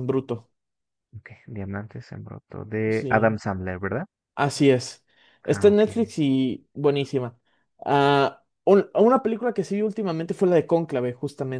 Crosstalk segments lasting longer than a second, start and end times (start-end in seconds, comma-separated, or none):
none